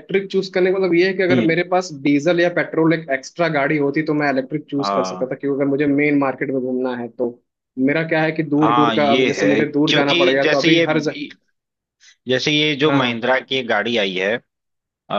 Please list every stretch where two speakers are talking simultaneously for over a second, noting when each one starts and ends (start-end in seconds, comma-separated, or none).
8.6-10.8